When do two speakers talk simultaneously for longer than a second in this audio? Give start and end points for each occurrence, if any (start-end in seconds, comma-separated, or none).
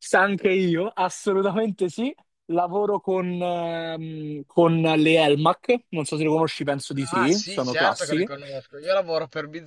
7.1-8.3